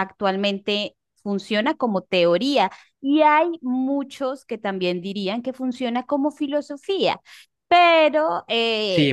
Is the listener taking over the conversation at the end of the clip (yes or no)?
yes